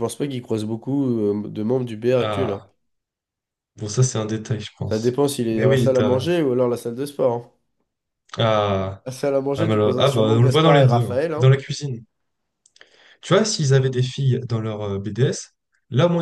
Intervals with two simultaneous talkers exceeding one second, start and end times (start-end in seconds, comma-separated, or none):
4.8-6.3, 9.6-11.5